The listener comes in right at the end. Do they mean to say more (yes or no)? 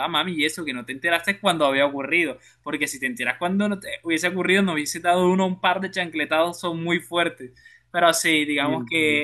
no